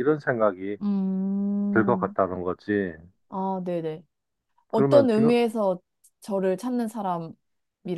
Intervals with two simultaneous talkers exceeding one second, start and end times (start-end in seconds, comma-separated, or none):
none